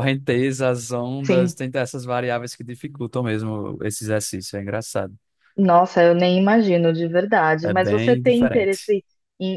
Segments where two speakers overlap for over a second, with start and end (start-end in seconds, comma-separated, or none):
7.6-8.9